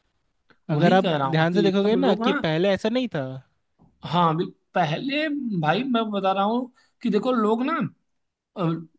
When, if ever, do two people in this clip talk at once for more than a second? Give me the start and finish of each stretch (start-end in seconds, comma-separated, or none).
0.7-2.3